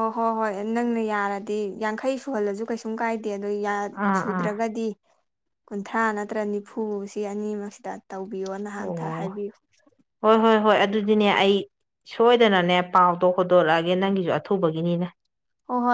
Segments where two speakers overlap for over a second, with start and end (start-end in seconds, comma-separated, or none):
none